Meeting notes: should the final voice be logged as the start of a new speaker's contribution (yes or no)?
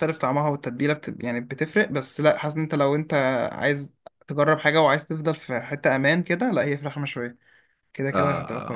yes